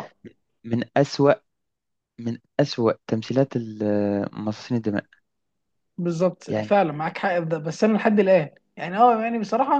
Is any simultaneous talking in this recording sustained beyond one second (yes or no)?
no